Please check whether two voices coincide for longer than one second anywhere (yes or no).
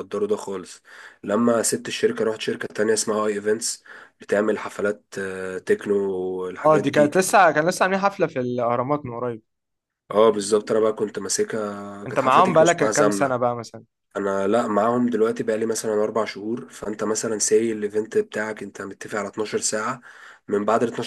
yes